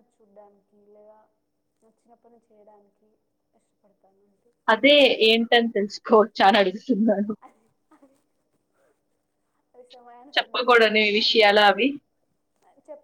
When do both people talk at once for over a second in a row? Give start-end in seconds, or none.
10.4-11.9